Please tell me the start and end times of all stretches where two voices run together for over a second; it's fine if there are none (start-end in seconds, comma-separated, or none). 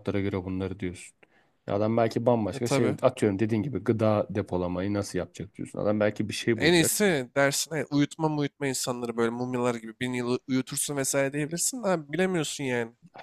none